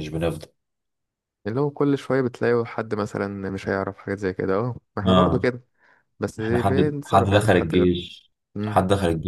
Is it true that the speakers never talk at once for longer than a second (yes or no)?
no